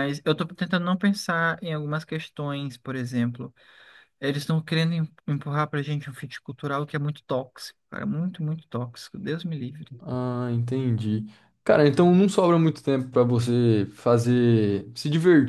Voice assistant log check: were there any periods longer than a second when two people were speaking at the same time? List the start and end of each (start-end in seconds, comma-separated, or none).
none